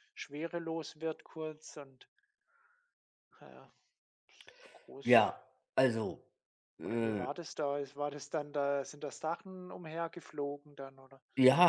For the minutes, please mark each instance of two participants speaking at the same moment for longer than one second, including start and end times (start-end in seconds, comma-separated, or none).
none